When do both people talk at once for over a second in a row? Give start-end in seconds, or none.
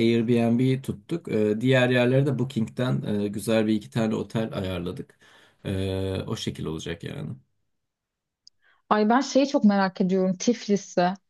none